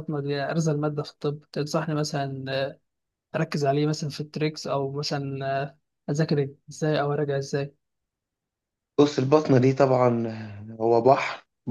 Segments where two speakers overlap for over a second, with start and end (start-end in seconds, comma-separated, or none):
none